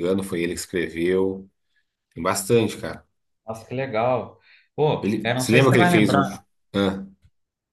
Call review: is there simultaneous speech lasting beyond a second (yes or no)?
yes